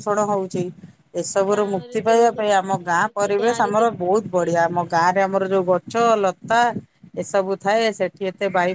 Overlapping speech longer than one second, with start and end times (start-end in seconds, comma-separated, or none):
1.5-5.0